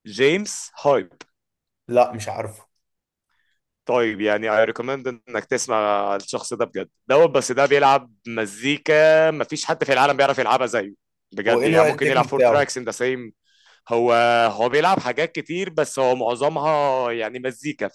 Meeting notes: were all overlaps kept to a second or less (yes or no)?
no